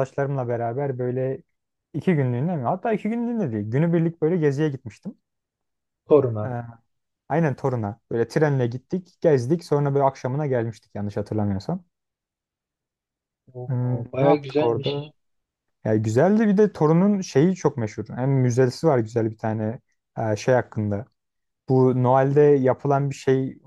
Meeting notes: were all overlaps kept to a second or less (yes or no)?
no